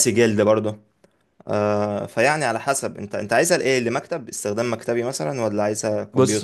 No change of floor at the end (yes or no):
no